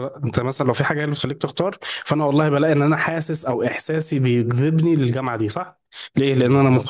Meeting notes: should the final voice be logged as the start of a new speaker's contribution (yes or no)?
no